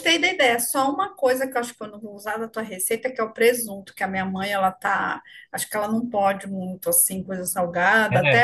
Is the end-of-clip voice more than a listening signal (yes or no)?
no